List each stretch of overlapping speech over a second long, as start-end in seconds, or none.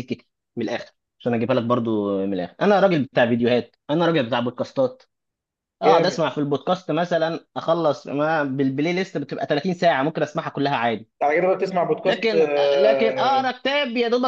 12.1-13.5